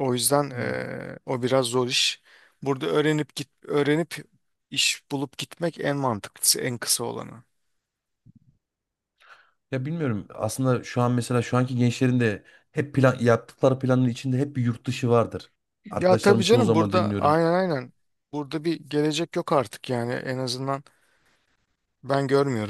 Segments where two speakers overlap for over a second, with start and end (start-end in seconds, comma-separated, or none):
15.9-17.4